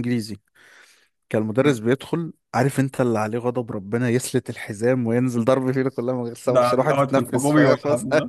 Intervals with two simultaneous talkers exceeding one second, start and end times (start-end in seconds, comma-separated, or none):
6.5-7.8